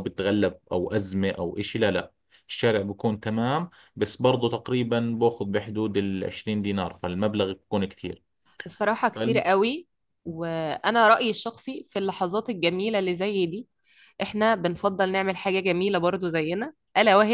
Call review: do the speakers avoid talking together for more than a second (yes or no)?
yes